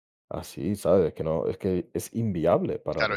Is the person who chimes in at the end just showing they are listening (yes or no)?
no